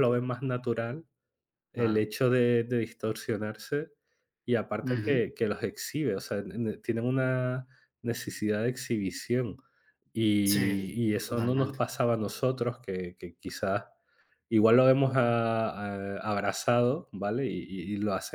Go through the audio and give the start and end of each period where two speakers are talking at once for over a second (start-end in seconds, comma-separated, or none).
10.4-11.8